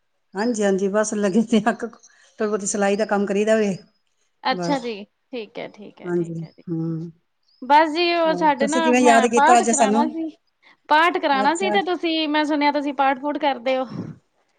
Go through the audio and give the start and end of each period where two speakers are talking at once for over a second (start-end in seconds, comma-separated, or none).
8.3-10.1